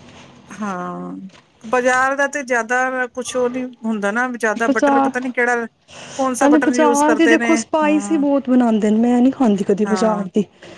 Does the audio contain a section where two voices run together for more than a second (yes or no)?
yes